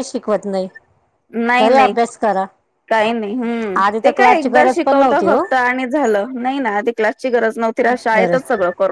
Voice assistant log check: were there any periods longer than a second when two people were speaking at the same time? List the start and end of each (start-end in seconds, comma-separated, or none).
3.9-5.4